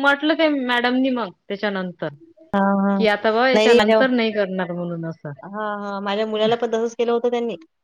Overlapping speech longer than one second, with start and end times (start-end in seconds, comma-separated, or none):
none